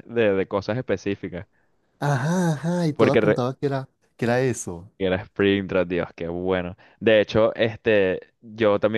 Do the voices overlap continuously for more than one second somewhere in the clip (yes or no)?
no